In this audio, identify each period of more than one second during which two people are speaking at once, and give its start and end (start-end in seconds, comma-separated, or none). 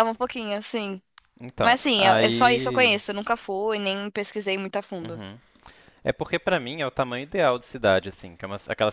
1.6-3.0